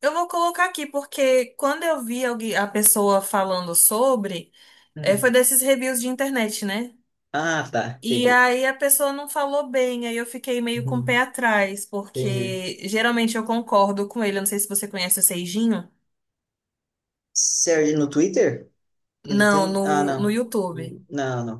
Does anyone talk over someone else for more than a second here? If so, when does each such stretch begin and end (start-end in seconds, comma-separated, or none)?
19.3-21.0